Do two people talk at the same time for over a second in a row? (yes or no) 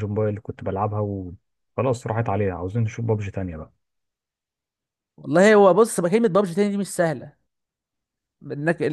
no